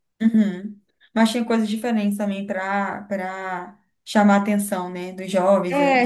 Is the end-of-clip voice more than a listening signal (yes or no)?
yes